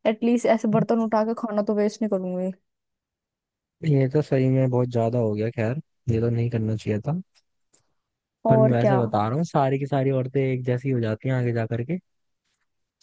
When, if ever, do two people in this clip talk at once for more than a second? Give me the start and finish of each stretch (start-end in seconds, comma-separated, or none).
none